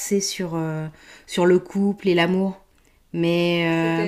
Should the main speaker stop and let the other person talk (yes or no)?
no